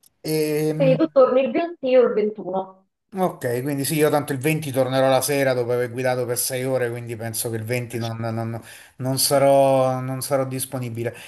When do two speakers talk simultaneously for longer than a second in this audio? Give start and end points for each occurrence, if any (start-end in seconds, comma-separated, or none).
none